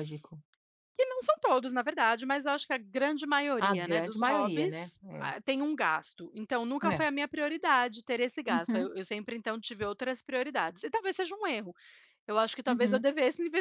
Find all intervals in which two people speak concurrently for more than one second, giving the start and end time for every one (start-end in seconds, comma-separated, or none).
3.6-5.3